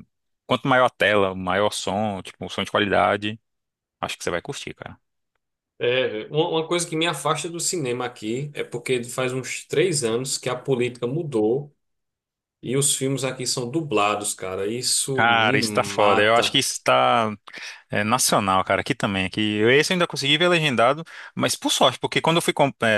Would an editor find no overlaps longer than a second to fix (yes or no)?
no